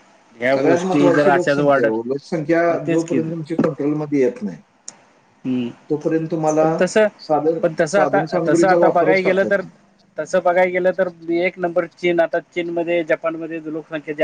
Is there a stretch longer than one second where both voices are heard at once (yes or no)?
yes